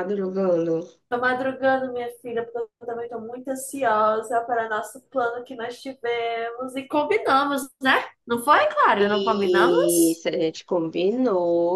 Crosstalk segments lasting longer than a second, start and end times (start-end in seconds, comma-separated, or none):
8.9-10.2